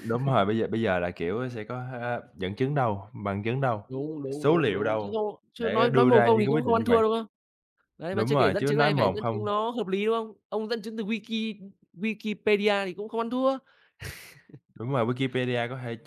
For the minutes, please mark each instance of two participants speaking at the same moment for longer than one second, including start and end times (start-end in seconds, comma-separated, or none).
4.3-7.0, 8.1-9.5